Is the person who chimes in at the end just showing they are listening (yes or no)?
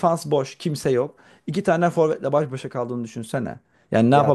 no